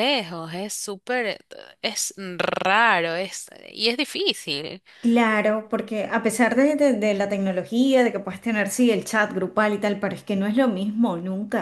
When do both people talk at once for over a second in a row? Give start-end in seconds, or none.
none